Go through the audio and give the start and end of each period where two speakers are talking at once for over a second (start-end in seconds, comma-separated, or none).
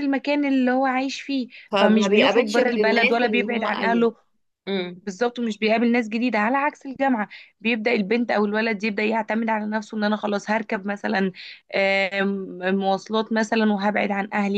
1.7-4.1